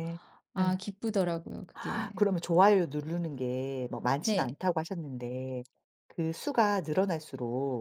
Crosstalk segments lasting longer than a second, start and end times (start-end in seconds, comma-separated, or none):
none